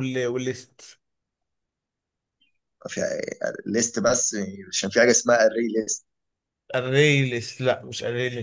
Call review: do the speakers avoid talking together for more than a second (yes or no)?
yes